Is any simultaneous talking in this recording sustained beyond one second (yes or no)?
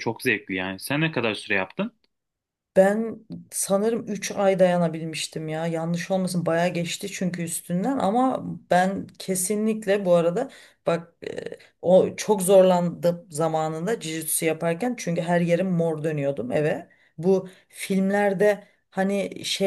no